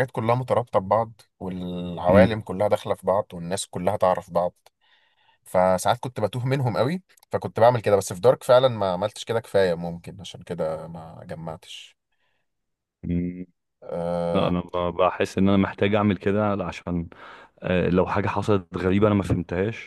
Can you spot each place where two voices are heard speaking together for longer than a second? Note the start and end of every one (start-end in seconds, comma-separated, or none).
none